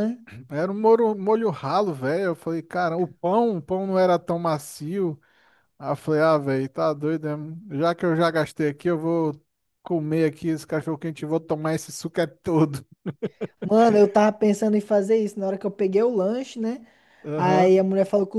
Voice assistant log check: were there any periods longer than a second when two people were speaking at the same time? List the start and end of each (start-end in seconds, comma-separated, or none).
none